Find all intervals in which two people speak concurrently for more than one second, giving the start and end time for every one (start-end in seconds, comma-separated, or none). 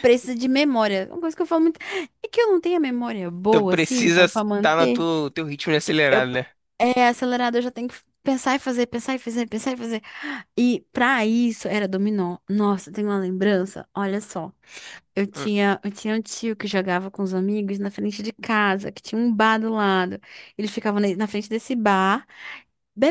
3.5-5.0